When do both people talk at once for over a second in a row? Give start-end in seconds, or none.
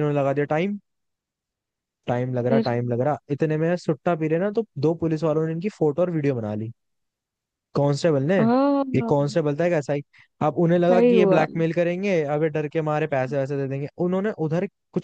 none